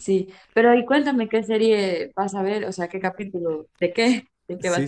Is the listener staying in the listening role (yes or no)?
no